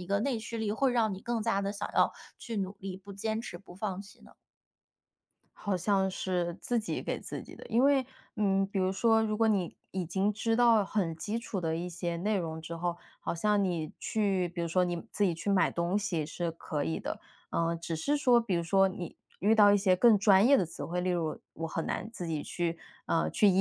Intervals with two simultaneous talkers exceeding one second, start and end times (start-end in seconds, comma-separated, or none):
none